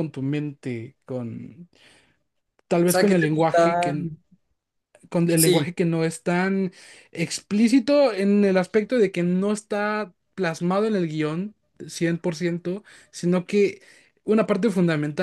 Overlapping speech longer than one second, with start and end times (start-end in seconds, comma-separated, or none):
2.9-4.1